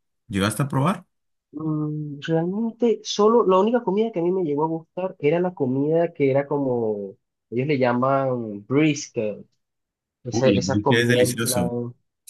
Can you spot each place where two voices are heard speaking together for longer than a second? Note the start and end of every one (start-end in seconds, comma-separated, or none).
10.3-11.7